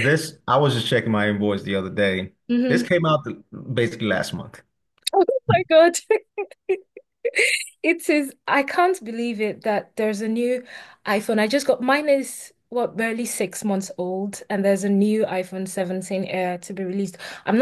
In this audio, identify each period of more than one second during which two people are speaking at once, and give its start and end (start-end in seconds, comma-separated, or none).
none